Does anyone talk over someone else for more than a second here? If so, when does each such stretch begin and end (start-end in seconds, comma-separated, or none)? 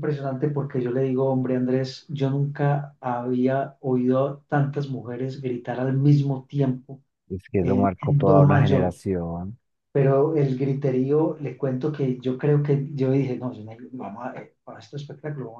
7.6-9.0